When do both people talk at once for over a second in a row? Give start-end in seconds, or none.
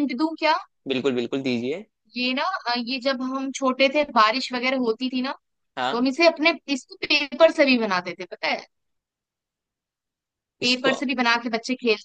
none